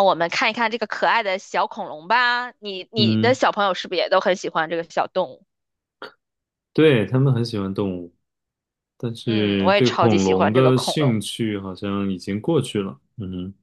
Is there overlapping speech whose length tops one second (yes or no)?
yes